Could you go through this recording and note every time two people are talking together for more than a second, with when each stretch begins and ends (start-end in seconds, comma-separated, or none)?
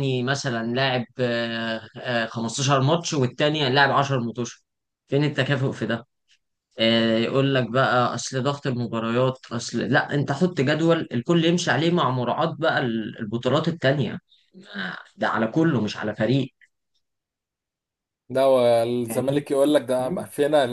none